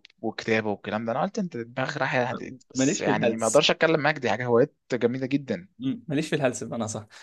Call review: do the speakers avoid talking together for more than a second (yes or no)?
no